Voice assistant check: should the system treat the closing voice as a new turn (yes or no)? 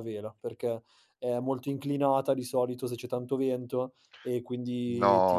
yes